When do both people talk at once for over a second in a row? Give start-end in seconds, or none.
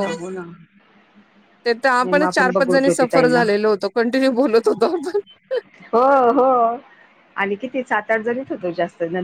2.0-3.4